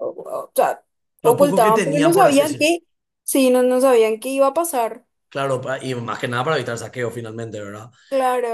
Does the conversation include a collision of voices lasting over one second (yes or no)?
yes